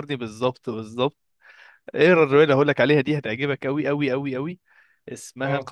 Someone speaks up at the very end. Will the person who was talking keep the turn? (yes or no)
yes